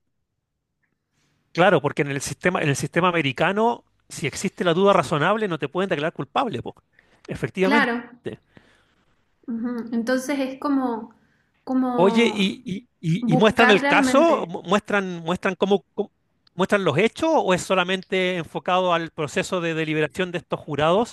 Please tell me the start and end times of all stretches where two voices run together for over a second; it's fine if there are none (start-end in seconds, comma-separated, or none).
13.2-14.5